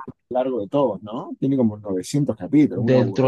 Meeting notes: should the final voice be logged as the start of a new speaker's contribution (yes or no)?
yes